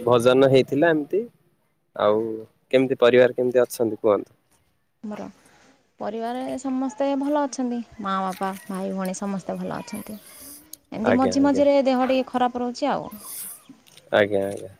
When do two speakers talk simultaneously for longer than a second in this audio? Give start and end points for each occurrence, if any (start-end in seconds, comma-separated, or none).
none